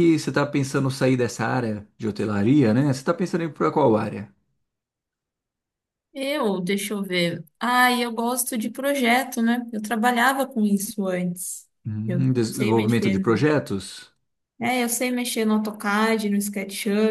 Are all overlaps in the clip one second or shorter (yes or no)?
no